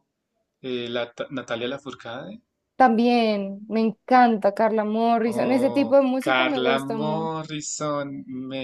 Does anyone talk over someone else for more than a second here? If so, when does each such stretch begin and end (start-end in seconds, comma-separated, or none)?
5.4-7.3